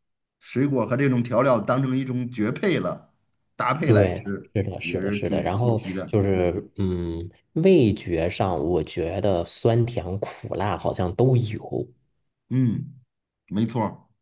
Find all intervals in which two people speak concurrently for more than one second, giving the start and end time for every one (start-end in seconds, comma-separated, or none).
3.8-6.2